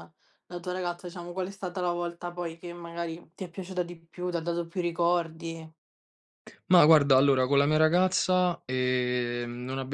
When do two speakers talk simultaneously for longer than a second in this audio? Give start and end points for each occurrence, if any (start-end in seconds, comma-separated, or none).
none